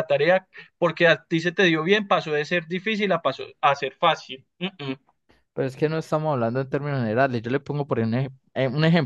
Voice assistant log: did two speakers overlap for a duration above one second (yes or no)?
no